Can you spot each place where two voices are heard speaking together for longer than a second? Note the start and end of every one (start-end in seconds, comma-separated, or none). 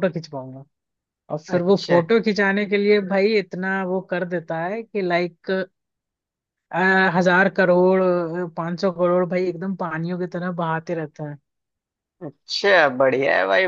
none